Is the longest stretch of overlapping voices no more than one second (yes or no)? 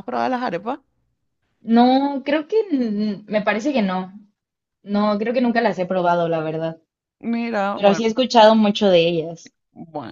yes